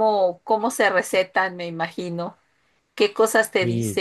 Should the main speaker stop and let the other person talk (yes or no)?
no